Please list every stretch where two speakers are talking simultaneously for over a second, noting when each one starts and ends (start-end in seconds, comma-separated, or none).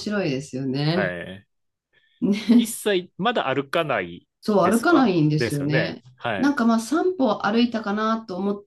4.4-6.5